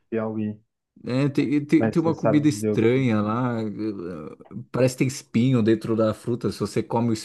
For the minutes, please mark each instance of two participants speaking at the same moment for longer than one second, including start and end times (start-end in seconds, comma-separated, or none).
1.8-3.1